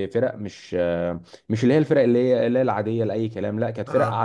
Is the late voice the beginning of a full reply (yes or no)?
no